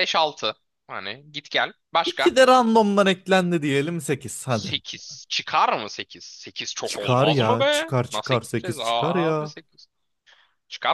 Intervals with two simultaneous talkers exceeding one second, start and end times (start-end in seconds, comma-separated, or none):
6.8-9.5